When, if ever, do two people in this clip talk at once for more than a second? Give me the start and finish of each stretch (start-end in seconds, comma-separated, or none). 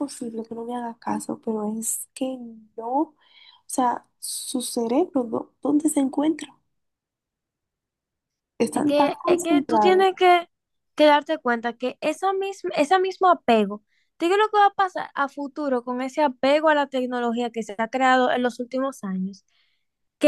8.7-10.1